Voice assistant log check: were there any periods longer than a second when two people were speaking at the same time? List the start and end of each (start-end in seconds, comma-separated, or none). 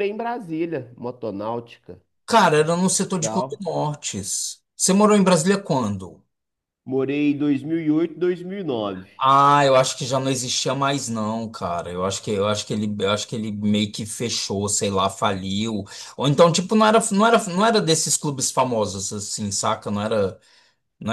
none